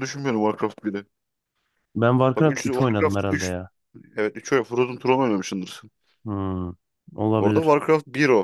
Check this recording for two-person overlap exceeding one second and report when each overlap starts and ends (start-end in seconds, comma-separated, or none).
2.4-3.5